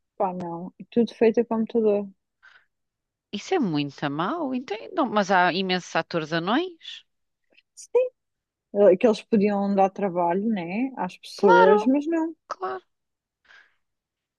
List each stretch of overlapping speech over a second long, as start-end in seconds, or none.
none